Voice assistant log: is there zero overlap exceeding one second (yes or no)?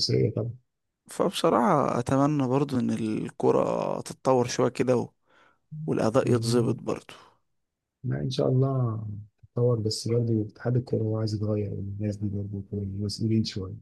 yes